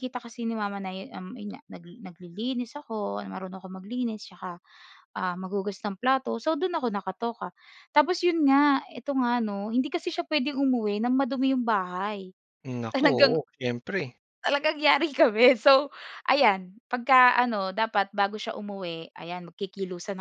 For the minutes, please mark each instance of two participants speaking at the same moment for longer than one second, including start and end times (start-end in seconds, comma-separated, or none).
none